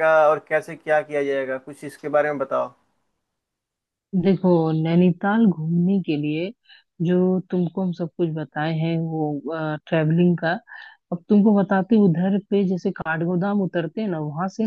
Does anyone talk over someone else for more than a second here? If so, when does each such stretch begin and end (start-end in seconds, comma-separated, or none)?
none